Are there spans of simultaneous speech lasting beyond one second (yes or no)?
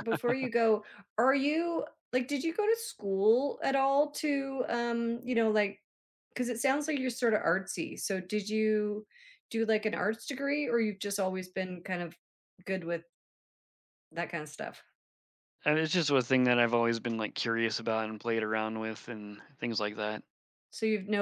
no